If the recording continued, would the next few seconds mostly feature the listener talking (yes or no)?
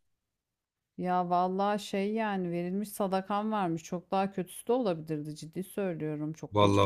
yes